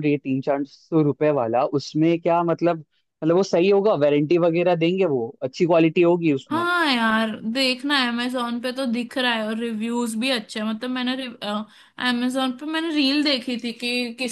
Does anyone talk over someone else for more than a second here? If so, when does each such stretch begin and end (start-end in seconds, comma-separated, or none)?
none